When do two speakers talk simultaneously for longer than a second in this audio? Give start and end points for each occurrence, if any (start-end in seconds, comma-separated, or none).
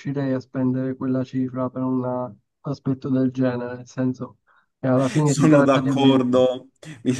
5.2-6.5